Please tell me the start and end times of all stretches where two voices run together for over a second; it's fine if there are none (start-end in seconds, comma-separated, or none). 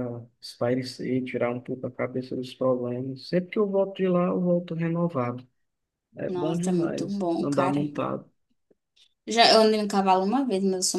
6.2-7.8